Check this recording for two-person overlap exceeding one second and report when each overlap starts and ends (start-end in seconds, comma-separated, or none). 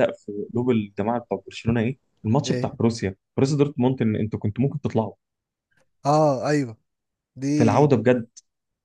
none